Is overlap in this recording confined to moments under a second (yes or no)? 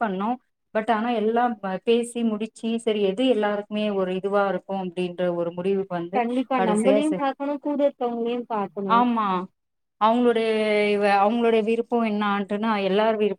yes